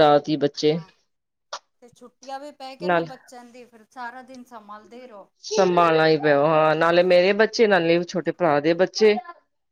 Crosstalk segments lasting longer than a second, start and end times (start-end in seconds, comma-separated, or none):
none